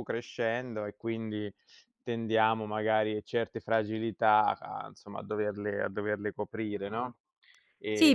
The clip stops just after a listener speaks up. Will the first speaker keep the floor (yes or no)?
no